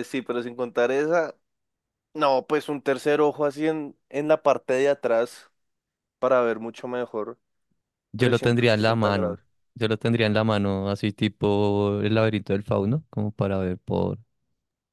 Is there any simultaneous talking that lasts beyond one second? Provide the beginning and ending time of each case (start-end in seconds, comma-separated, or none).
8.2-9.4